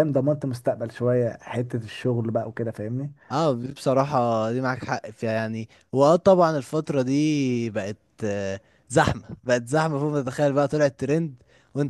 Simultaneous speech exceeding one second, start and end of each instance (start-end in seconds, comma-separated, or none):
none